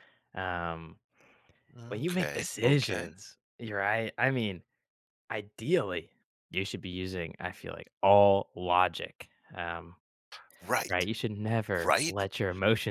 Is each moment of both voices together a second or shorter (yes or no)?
no